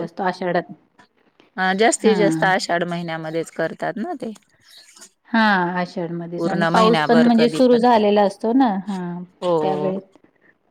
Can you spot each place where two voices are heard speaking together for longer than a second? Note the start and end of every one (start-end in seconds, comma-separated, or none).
6.4-7.8